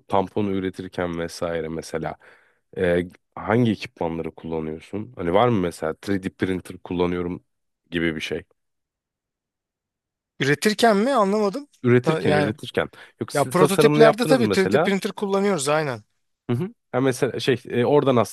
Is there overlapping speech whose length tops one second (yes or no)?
yes